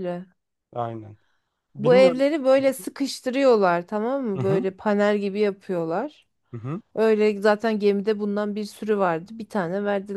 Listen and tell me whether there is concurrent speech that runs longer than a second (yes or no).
no